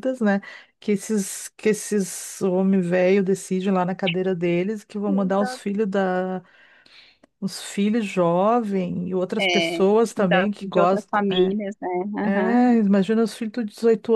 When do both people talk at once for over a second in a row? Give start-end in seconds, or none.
9.4-11.6